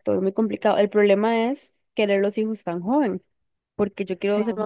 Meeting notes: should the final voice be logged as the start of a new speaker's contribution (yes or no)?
no